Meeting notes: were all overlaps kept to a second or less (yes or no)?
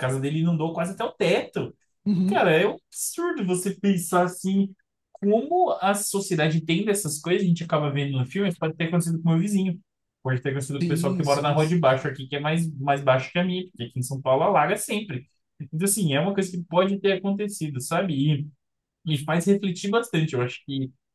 no